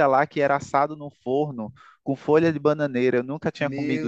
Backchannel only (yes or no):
no